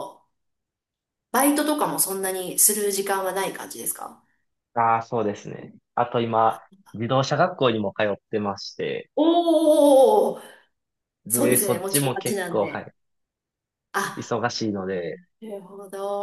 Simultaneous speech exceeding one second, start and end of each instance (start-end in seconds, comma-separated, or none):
11.3-12.9